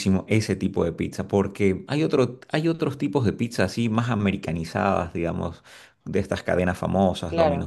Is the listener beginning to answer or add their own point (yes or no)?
no